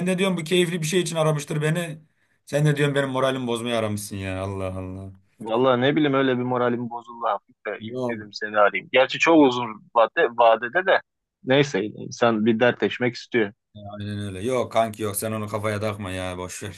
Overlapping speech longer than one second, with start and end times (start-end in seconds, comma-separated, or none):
none